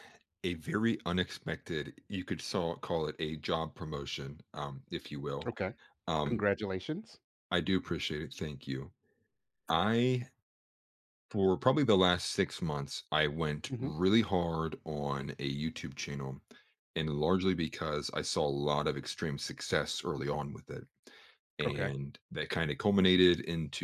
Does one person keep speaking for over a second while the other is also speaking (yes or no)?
no